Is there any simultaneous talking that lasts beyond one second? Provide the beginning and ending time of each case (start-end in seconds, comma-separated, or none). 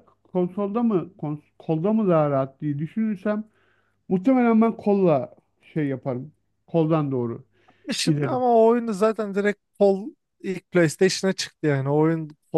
none